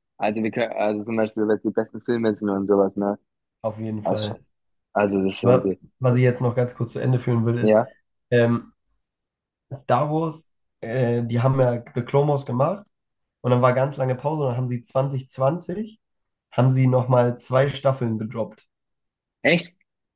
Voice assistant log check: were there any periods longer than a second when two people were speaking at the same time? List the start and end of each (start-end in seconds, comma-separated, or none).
none